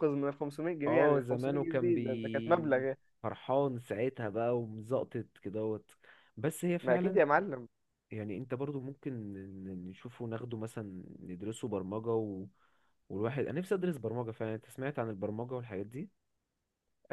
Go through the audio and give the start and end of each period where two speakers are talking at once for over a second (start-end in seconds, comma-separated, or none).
0.9-2.8